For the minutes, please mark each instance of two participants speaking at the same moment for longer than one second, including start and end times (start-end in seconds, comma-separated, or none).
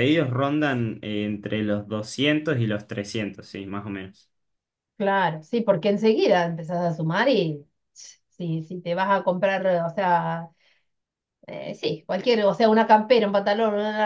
none